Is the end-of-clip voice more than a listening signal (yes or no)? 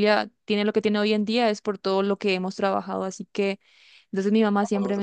no